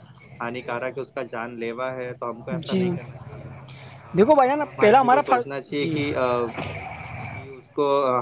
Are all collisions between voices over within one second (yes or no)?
no